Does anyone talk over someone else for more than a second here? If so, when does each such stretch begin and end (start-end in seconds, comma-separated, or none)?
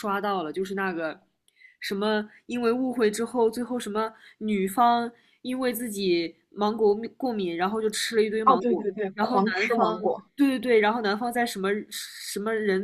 8.4-10.0